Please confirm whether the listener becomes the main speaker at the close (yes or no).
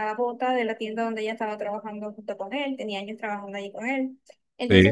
no